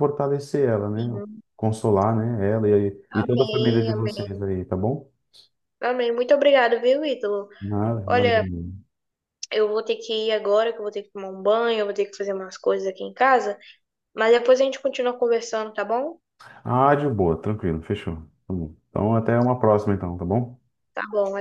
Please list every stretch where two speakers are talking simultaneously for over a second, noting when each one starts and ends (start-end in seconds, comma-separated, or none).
3.1-4.4